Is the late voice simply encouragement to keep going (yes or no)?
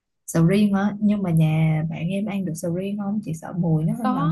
no